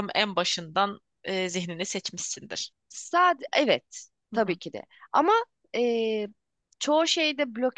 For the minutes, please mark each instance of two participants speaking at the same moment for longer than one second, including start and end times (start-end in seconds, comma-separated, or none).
none